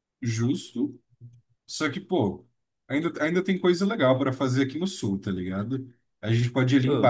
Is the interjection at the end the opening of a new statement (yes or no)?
no